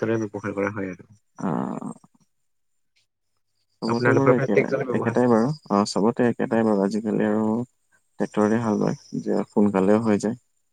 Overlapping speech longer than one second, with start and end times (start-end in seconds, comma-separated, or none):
3.9-5.2